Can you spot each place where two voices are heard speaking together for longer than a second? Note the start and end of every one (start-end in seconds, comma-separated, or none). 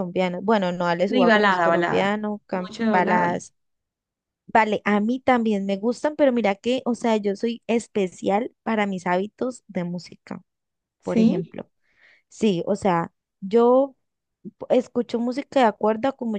1.1-3.3